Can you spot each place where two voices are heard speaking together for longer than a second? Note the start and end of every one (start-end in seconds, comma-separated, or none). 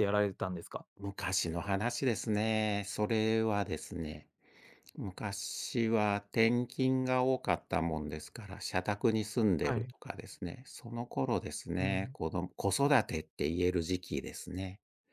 none